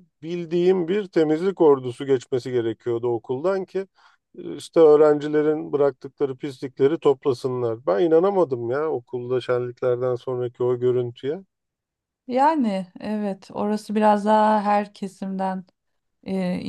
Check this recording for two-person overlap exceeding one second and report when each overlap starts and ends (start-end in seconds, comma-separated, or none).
none